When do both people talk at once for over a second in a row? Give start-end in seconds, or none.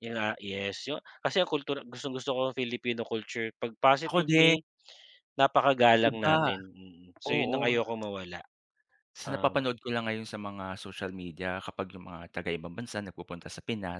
none